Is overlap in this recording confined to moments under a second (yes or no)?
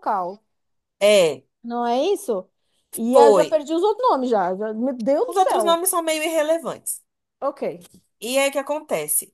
yes